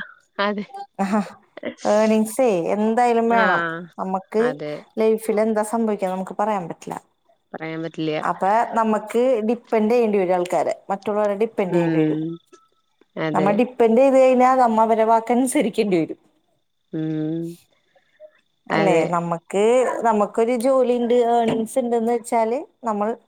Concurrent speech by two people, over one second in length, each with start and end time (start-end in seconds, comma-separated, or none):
none